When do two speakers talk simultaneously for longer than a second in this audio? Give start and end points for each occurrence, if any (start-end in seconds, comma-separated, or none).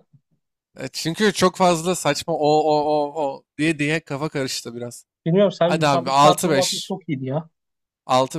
5.7-6.9